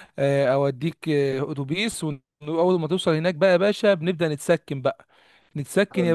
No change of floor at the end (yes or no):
yes